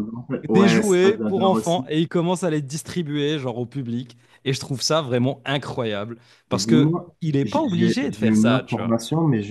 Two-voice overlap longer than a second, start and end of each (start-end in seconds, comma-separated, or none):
0.5-1.9, 6.5-9.0